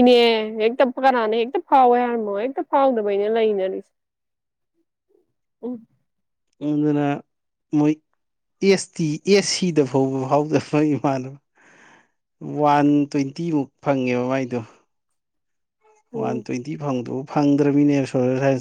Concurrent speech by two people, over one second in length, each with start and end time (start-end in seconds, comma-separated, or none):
none